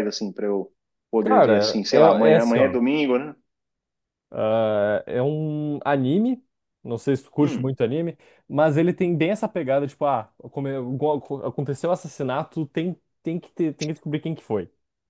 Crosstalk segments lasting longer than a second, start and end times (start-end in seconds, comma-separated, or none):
1.2-2.8